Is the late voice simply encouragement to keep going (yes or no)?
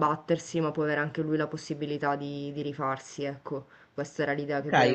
no